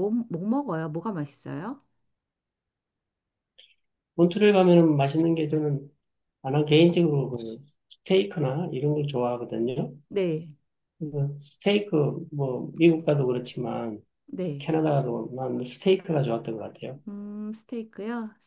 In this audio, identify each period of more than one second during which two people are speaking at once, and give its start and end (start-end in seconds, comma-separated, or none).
none